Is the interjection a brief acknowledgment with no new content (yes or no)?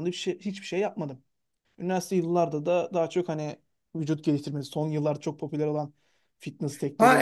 no